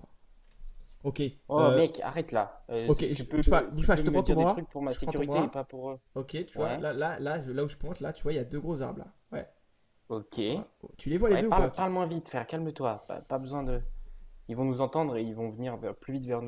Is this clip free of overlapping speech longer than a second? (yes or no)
no